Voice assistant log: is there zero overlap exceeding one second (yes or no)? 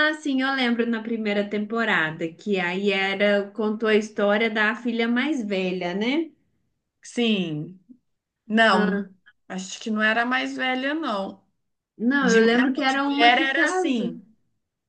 no